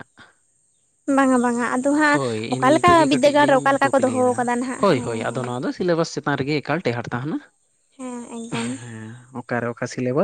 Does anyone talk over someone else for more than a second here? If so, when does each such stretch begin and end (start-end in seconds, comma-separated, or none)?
2.6-5.5